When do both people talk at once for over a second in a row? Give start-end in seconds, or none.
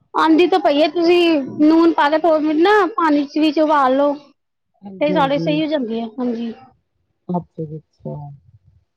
none